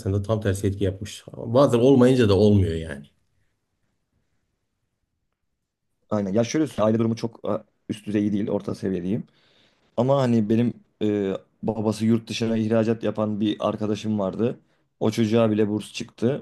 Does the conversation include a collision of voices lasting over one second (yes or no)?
no